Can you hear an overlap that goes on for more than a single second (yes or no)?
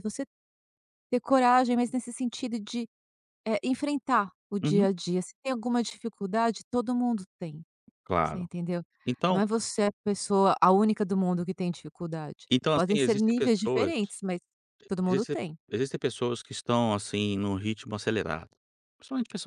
yes